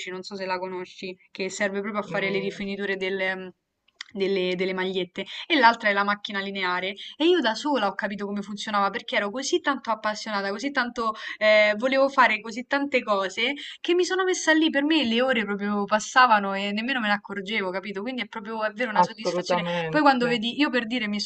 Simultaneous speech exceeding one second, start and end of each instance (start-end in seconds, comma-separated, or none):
19.0-20.3